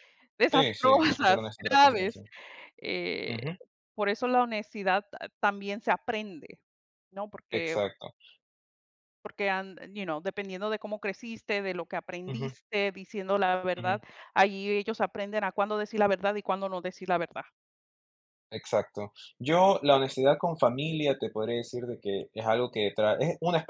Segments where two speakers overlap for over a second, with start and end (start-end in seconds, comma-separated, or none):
0.5-2.2